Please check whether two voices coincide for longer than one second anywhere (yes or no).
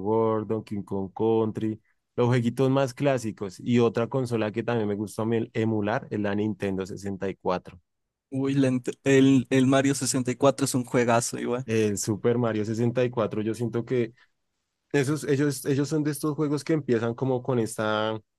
no